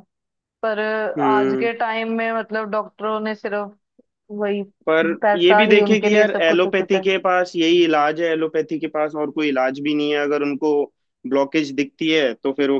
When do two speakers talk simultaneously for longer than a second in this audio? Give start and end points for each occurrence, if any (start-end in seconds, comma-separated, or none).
5.2-7.1